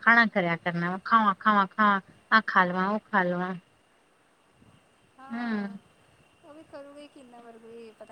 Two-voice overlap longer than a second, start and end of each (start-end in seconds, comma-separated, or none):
none